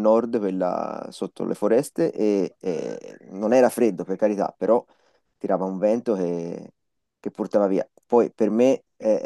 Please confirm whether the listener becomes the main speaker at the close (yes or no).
no